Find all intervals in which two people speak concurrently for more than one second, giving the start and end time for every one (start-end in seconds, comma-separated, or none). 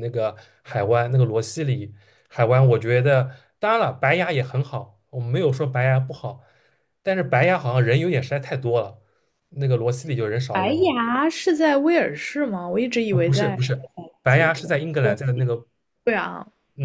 13.1-15.2